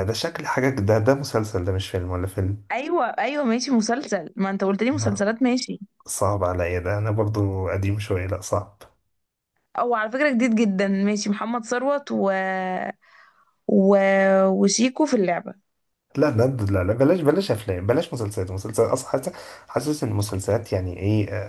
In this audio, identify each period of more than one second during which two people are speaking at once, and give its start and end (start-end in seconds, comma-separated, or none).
none